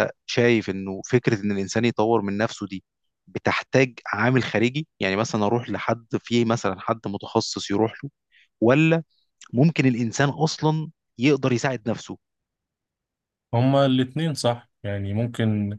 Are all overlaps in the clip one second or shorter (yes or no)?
yes